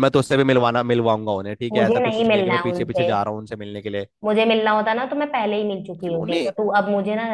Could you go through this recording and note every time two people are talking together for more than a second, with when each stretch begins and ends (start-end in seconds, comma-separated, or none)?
1.7-3.1